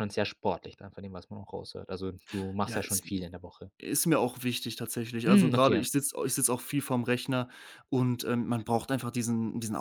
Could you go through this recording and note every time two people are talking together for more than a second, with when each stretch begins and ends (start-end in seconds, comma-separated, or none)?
none